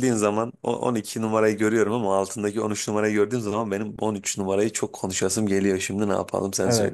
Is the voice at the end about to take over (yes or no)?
yes